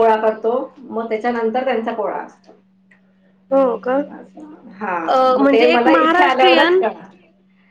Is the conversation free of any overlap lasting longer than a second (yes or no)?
no